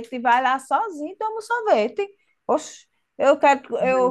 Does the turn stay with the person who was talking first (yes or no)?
yes